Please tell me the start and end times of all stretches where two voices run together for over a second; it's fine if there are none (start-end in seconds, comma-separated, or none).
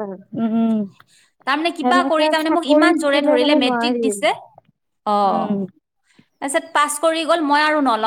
1.8-4.0